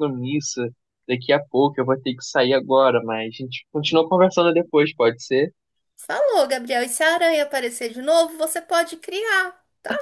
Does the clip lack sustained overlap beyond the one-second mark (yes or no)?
yes